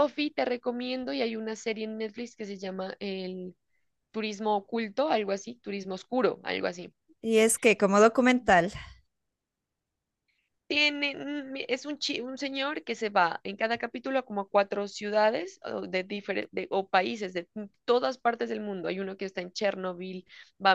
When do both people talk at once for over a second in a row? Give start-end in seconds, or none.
none